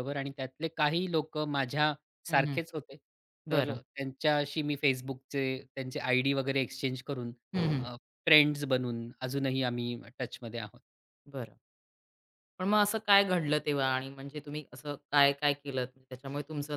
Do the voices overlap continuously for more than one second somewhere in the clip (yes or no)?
no